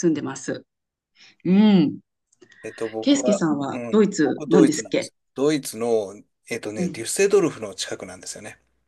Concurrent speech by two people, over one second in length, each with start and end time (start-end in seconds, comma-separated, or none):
3.0-5.1